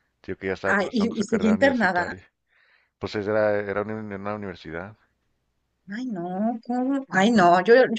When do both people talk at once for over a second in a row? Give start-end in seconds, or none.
0.7-2.1